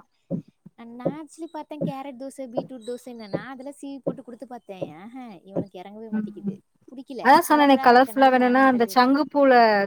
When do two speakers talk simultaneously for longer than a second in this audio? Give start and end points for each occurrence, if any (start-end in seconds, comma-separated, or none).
7.2-9.2